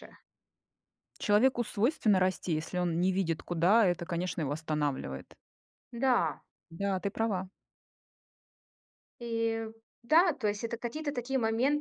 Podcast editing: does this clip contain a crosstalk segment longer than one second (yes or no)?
no